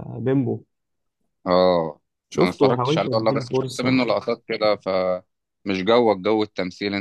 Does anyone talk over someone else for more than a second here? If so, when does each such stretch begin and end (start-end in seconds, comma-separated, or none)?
2.4-3.9